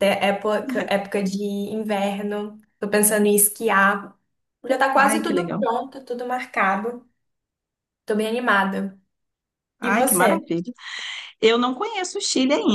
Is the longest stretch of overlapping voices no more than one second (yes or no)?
yes